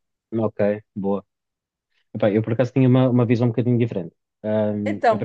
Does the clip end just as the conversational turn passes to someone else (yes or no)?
no